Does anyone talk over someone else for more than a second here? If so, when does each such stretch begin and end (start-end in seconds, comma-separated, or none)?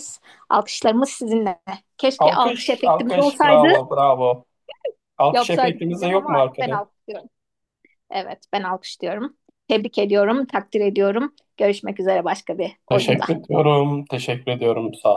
2.2-3.7, 5.3-6.8